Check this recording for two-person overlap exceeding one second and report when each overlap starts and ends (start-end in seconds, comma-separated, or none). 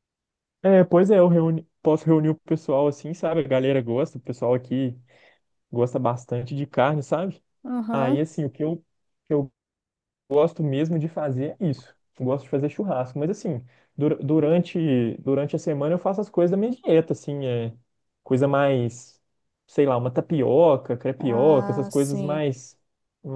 21.2-22.4